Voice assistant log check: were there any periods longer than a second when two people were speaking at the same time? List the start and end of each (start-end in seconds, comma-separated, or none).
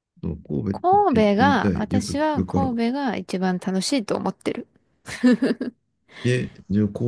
0.7-2.7